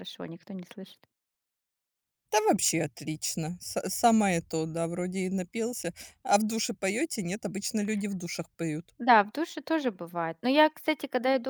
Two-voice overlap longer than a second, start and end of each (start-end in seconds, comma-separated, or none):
none